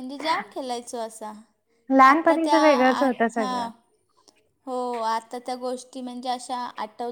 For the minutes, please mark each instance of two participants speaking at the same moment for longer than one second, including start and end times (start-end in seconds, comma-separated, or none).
none